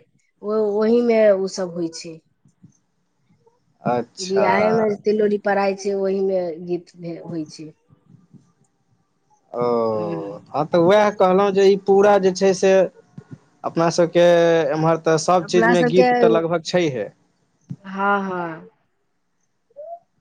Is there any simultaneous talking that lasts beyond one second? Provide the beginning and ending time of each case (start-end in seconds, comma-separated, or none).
none